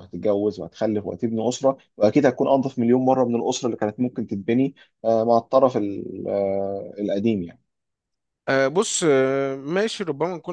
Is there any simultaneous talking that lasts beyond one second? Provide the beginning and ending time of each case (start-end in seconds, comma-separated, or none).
none